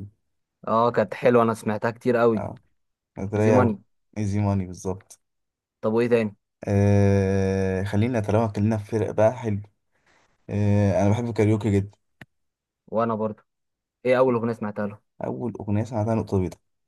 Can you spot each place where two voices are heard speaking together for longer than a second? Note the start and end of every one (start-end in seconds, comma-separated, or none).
none